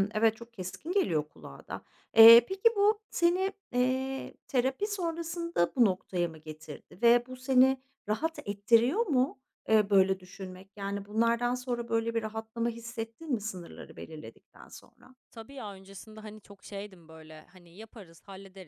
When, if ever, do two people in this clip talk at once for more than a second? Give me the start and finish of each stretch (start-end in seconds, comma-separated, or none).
none